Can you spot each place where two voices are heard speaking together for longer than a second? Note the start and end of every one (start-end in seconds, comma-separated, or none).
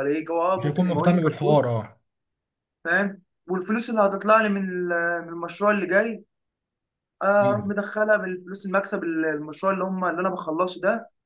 0.6-1.8